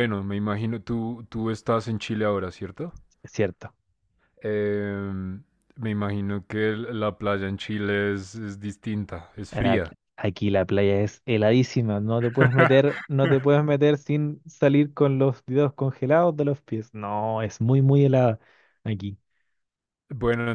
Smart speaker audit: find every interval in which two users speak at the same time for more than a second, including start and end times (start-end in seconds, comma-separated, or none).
none